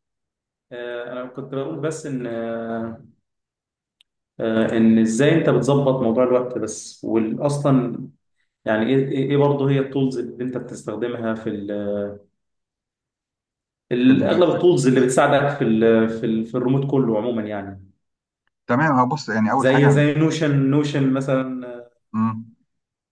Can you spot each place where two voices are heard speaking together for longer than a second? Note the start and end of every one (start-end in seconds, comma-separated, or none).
none